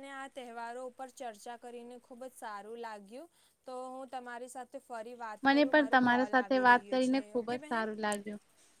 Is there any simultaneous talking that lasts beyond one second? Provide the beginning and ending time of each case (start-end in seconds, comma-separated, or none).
5.4-7.9